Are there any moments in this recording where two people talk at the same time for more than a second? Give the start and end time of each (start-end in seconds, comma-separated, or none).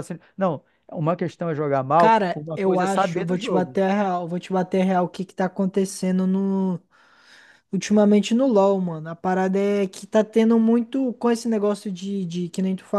2.0-3.8